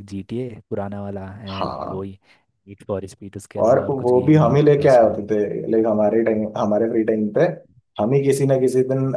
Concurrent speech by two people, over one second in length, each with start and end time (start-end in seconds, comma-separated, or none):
3.6-5.2